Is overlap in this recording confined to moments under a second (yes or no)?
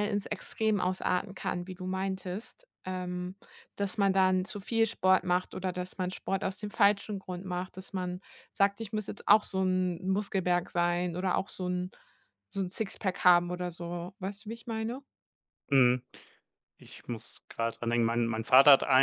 yes